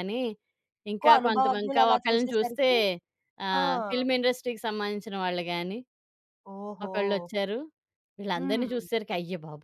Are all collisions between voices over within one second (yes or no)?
no